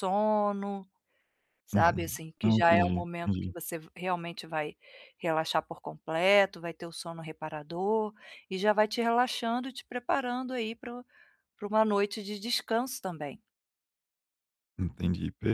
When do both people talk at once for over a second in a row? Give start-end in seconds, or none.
1.7-3.5